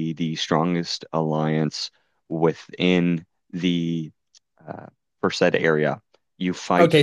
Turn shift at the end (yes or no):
yes